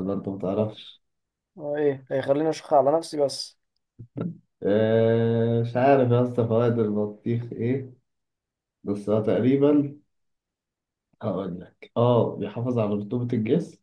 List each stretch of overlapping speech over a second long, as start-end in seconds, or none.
none